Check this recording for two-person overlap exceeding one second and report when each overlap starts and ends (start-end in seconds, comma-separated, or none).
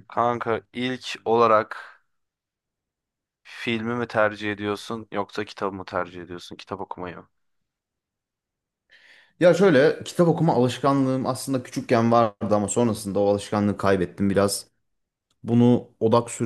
none